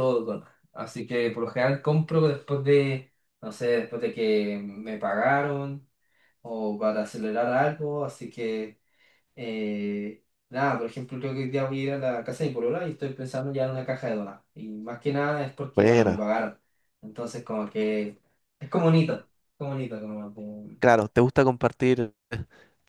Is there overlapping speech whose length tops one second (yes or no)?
no